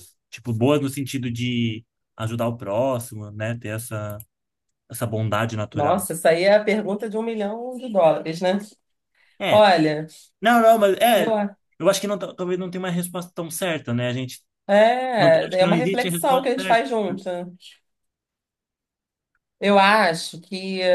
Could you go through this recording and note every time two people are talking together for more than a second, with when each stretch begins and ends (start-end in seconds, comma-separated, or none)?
15.2-16.9